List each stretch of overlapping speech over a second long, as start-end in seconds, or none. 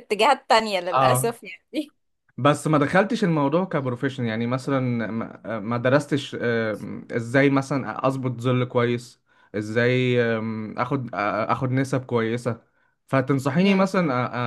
none